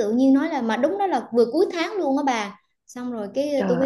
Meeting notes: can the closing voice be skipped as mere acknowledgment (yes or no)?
yes